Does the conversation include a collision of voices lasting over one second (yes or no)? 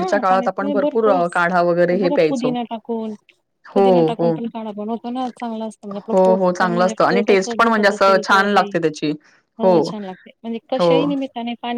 yes